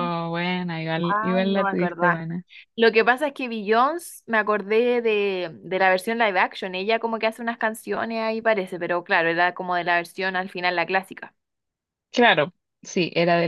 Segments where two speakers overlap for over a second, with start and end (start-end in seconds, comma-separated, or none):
1.1-2.3